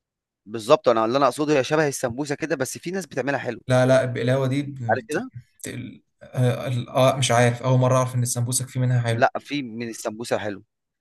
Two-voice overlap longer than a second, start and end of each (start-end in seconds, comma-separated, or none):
none